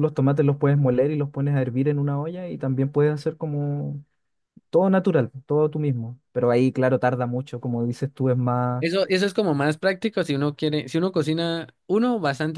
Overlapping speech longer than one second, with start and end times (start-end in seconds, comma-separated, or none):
none